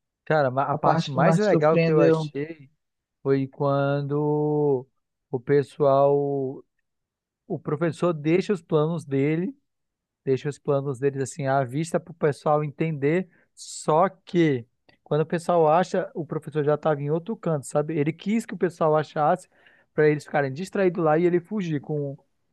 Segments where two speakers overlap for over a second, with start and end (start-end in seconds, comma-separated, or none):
0.7-2.3